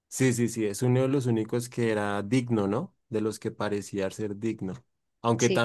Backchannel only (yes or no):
yes